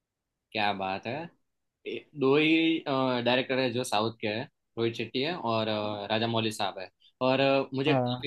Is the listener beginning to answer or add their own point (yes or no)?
no